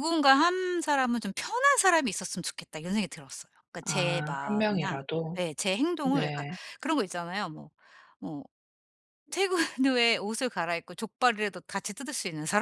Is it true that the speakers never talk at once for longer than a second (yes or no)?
no